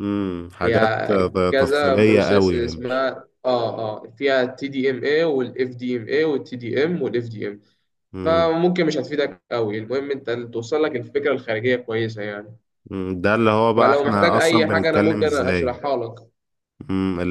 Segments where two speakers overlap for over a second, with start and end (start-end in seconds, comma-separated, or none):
0.6-3.0, 13.8-15.8